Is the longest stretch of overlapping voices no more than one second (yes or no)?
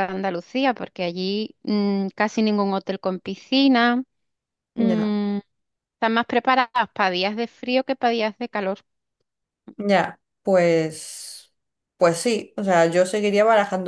yes